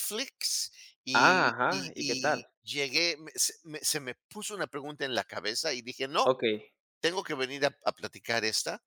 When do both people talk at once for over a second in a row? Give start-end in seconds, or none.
1.1-2.5